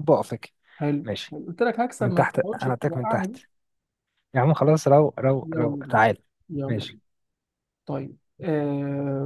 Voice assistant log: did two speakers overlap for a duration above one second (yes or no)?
yes